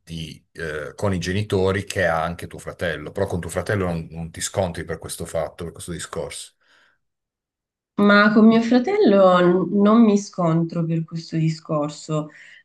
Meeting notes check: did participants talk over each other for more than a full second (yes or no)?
no